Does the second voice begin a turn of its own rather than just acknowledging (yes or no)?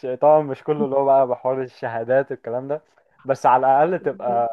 no